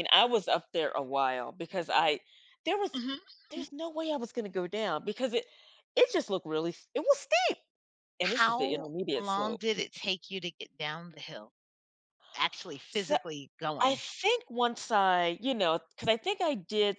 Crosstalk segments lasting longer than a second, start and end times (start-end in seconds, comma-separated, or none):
8.2-9.6